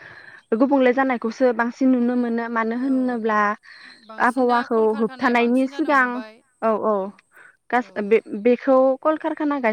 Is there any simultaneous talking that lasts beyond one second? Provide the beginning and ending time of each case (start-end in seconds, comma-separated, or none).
4.3-6.1